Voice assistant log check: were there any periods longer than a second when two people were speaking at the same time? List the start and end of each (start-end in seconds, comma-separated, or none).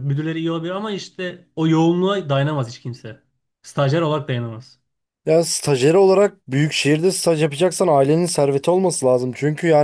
none